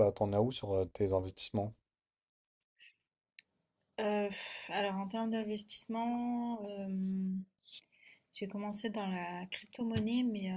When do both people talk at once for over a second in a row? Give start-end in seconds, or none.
none